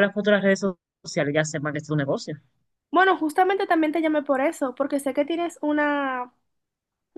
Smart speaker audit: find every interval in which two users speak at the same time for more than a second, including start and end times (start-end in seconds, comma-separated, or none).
none